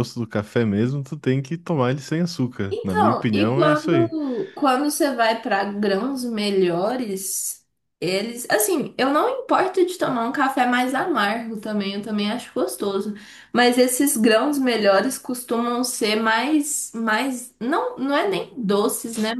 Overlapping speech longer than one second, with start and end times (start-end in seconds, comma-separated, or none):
2.7-4.2